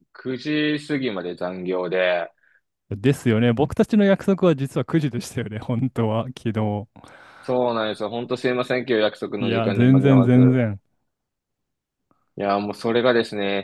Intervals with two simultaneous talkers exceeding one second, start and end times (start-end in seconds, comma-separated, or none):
9.4-10.6